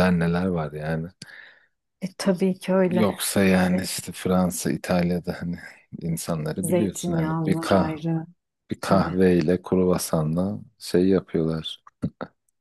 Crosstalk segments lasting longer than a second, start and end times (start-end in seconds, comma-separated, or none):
6.6-8.0